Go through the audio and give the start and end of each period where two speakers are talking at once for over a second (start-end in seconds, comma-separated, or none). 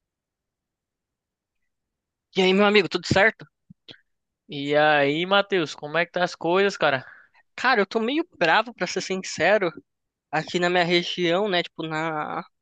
none